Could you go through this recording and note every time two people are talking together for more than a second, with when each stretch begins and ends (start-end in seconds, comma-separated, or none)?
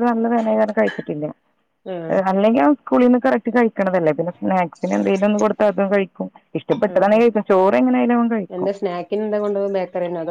none